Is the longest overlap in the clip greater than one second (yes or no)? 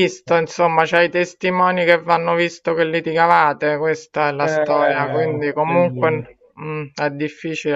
yes